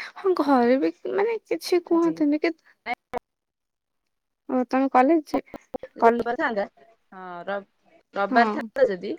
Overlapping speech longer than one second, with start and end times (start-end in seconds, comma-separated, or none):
none